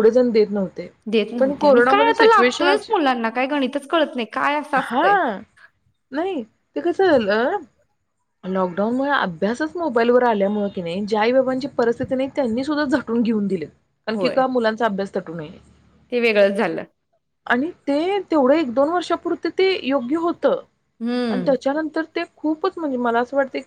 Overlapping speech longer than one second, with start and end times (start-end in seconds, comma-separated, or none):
1.4-2.9